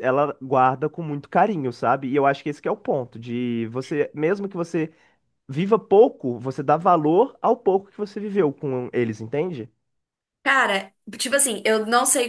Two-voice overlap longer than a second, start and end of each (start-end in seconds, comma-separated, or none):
none